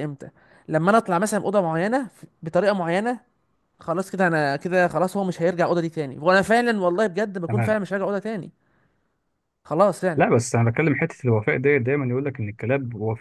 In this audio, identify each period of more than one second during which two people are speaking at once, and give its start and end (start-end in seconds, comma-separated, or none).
none